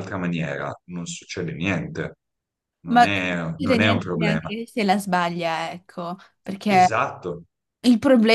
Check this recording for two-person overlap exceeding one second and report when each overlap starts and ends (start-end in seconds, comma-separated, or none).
2.9-4.5